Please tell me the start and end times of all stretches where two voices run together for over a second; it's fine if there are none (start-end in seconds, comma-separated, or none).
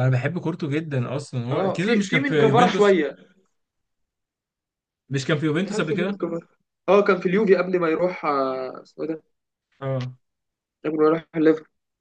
1.5-3.0